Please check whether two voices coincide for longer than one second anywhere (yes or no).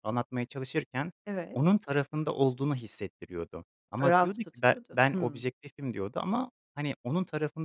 yes